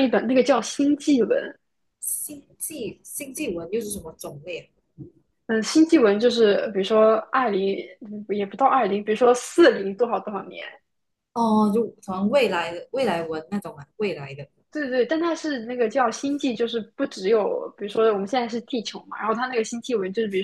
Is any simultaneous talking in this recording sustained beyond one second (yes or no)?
no